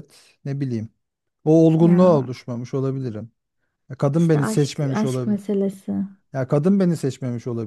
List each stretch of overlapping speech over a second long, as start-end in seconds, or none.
4.1-5.4